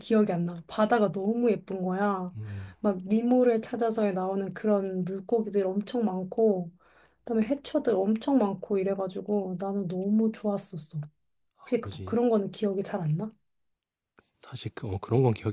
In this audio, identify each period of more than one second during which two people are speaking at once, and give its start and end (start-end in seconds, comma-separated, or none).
none